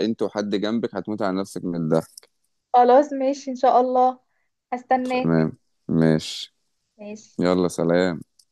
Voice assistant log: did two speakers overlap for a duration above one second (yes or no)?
no